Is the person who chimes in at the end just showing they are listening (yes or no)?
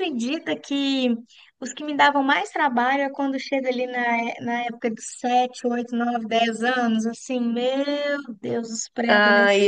no